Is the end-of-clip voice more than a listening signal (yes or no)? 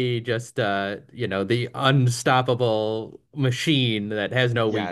yes